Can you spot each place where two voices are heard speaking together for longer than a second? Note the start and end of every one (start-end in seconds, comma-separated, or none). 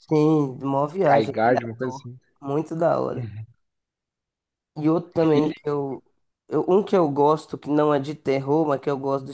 0.8-2.2